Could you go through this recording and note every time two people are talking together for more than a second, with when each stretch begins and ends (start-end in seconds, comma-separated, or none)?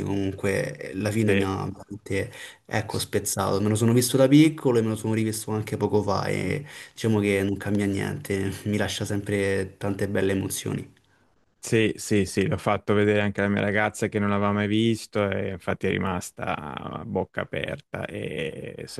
none